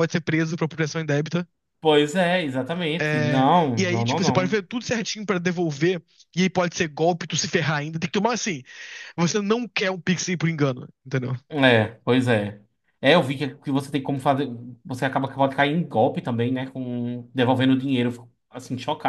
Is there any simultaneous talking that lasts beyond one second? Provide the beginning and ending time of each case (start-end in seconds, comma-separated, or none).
3.0-4.6